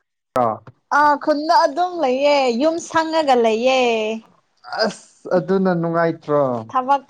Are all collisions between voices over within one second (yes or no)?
yes